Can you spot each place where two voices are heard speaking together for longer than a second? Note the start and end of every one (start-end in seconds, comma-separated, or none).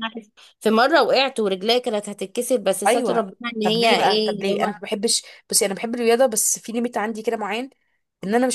2.9-4.7